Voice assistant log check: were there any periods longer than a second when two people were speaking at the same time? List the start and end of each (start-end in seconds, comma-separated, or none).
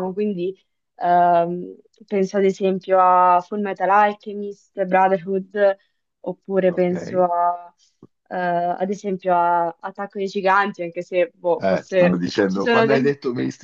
11.6-13.1